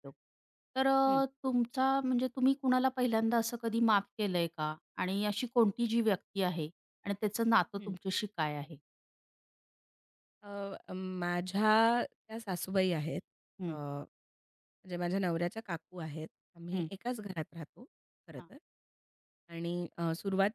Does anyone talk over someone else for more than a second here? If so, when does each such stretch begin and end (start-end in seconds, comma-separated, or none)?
none